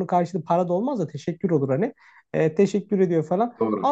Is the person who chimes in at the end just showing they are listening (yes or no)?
yes